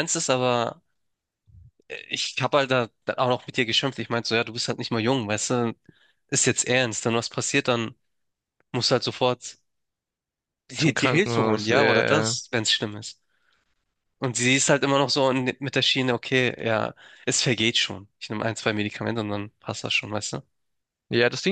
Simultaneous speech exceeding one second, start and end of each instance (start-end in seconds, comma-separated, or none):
10.8-12.4